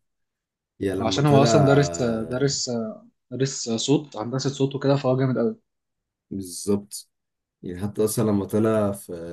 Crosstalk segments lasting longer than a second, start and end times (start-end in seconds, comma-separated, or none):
none